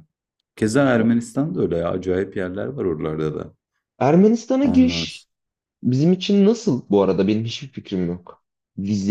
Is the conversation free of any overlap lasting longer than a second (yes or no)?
yes